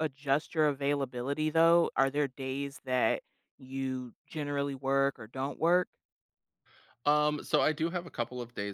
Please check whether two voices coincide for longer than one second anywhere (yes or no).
no